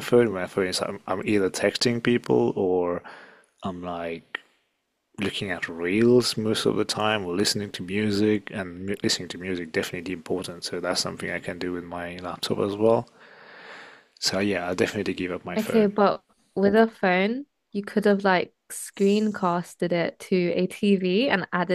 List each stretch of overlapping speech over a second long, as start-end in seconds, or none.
none